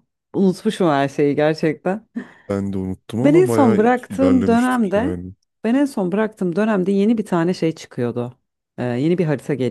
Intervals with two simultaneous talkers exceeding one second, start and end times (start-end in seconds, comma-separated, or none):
3.2-5.2